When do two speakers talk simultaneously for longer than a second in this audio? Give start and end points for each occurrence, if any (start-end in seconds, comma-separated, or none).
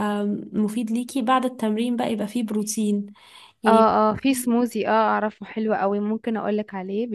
none